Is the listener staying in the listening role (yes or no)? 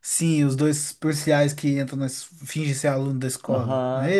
no